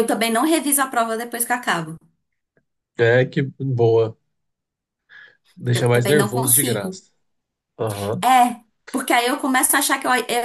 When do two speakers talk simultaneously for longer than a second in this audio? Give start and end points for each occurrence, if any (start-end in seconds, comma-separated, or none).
5.7-7.0